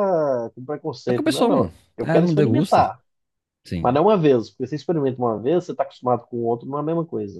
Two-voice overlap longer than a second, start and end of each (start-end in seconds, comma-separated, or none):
1.1-2.9